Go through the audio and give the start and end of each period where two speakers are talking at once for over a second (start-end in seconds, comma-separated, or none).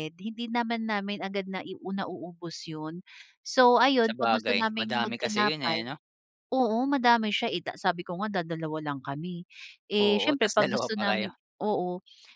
4.1-5.9, 10.0-11.3